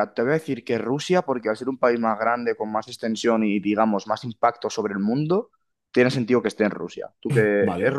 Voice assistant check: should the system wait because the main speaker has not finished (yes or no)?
no